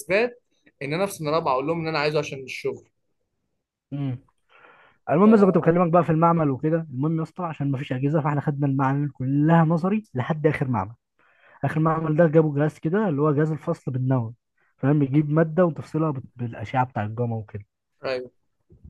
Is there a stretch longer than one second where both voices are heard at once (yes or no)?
no